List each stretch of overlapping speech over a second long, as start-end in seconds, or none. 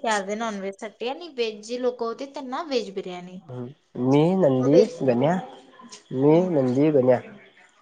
none